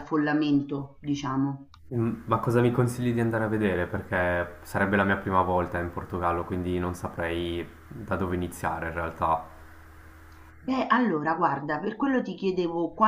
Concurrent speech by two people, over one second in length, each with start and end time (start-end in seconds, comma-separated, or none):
none